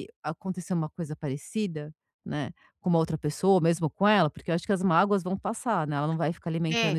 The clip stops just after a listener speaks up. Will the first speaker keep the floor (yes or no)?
no